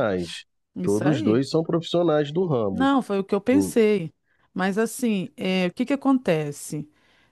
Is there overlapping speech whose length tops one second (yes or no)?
no